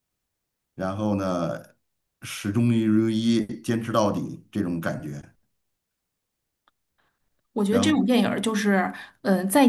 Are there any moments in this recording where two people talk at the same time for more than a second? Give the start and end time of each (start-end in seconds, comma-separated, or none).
none